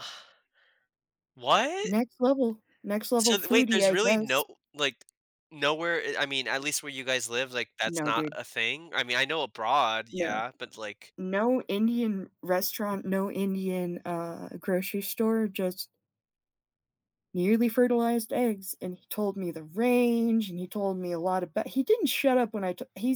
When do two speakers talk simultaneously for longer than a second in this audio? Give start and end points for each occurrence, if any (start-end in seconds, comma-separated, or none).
3.2-4.4